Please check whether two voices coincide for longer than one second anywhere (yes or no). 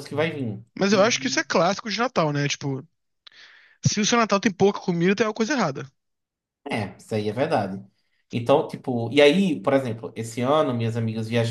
no